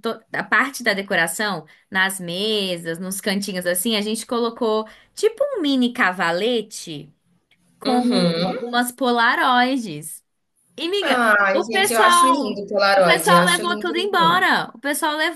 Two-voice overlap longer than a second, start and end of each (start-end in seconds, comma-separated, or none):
11.0-14.5